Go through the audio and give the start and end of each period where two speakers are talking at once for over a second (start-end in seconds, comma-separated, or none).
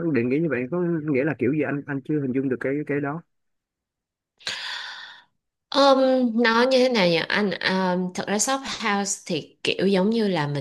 none